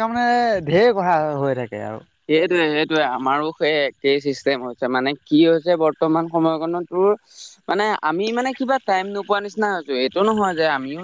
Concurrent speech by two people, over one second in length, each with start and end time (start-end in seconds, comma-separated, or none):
none